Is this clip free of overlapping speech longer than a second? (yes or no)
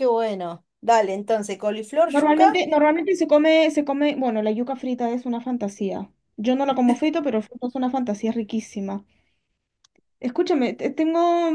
yes